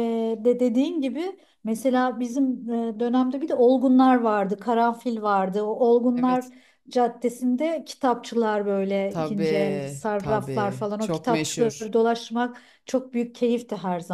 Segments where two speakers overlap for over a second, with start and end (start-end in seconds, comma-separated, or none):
9.1-11.9